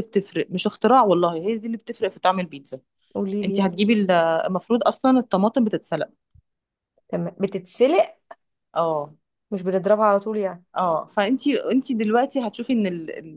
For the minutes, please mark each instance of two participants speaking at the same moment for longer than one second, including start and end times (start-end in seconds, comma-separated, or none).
none